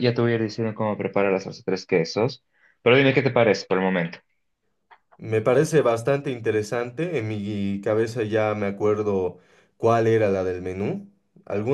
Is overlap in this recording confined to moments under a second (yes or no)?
yes